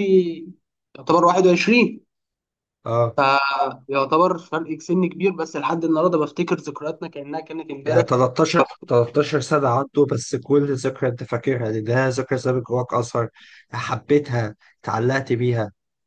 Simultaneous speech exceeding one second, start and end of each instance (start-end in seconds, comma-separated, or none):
none